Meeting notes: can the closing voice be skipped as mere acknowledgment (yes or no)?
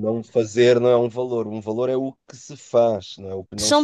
no